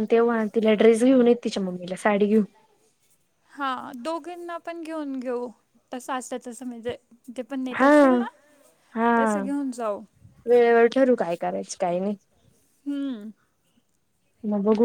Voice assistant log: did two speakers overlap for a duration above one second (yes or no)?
no